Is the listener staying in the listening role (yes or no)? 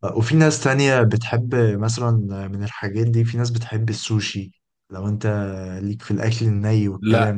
no